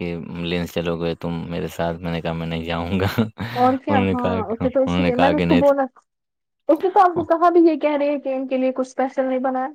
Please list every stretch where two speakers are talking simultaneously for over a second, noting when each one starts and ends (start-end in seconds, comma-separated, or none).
3.6-5.8